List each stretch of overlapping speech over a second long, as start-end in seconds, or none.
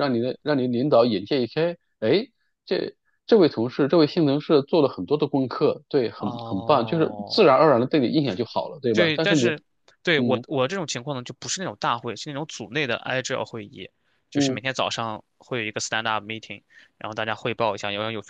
6.2-7.6